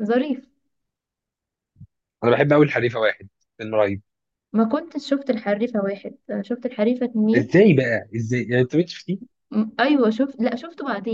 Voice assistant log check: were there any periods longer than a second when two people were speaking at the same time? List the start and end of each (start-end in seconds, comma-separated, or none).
none